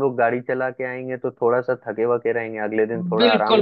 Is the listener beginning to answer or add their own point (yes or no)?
yes